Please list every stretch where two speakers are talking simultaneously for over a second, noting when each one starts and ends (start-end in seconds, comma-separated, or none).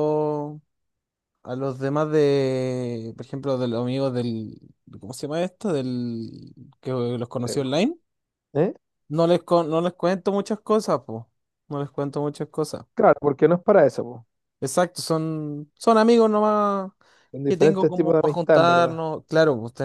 17.5-19.0